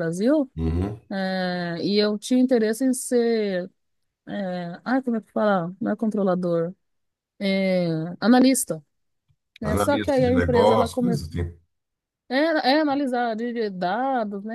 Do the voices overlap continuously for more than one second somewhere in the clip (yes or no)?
yes